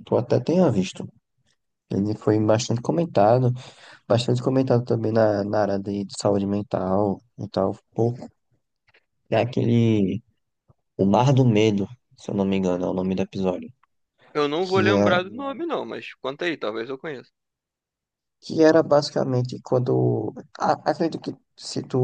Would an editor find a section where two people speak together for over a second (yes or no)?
no